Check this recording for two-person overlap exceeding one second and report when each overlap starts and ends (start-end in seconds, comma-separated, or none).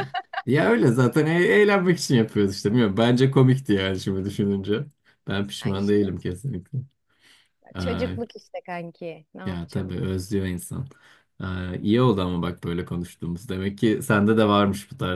none